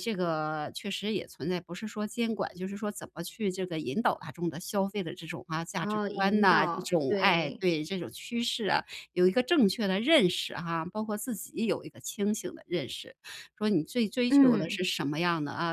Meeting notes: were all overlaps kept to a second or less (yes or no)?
no